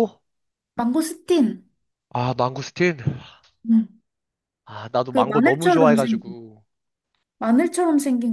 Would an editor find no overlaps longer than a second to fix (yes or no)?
no